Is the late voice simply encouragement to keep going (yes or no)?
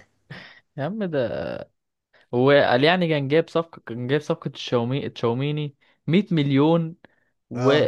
yes